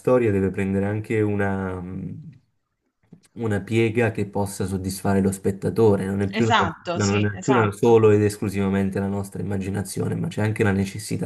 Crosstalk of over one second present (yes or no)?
yes